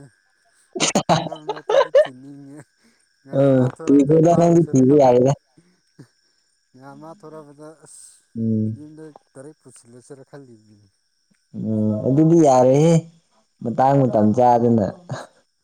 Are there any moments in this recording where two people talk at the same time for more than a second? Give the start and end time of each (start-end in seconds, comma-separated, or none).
3.2-5.1